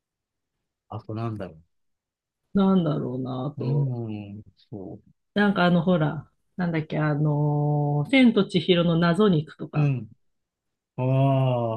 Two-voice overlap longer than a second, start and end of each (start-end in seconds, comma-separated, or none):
none